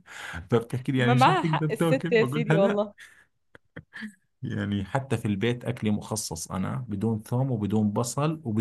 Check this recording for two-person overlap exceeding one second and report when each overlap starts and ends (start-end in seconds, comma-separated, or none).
1.0-2.8